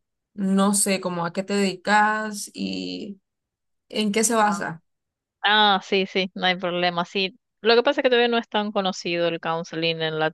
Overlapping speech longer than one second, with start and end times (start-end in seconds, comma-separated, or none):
none